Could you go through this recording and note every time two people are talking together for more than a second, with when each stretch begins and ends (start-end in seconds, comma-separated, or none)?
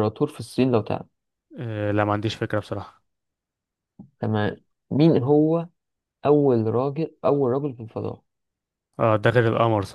none